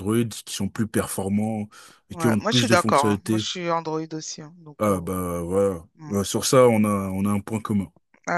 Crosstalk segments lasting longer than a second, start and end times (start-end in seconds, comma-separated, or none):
2.1-3.5